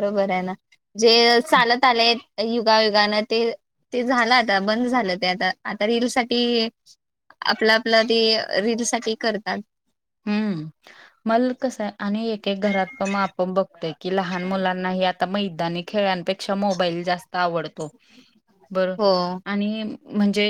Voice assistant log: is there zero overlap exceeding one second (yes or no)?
yes